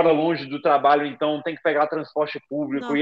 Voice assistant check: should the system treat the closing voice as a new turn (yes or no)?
no